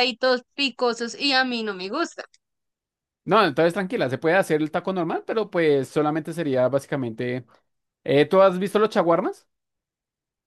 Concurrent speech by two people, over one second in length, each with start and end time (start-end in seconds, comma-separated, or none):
none